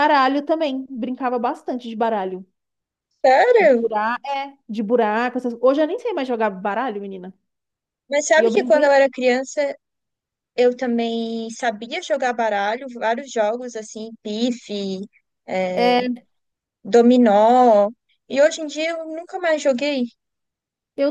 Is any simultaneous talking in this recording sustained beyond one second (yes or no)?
no